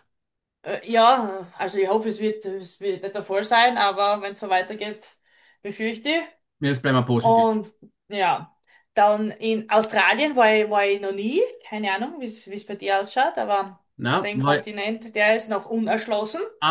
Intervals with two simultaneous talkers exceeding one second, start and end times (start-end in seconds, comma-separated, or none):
none